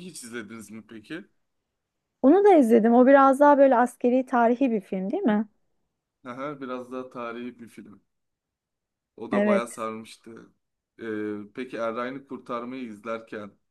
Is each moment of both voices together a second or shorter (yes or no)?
yes